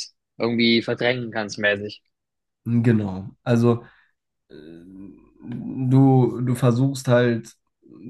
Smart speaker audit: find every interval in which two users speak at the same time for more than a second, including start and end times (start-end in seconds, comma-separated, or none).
none